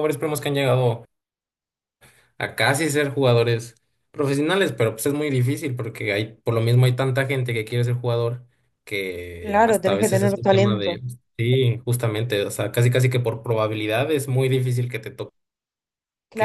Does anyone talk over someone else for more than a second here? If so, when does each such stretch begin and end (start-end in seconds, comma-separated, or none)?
9.4-11.0